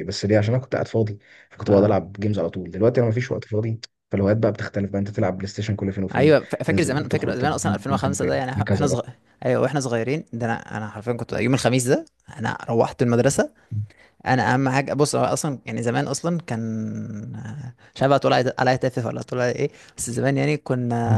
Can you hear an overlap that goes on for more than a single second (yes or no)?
yes